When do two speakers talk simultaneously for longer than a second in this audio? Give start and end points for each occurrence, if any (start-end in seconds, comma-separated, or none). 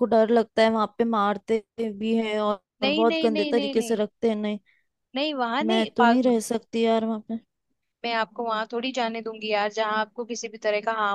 2.8-4.0